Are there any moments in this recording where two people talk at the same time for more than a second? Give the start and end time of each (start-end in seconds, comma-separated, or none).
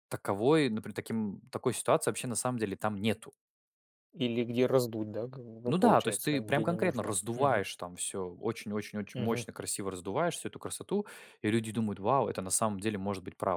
5.7-7.6